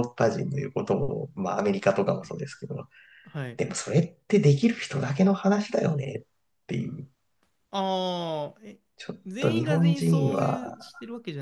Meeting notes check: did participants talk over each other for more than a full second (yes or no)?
yes